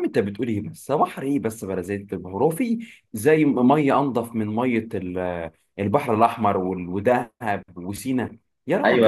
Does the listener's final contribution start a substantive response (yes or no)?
yes